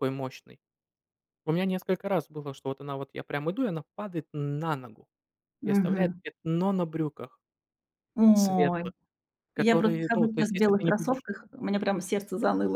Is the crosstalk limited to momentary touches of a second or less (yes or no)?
no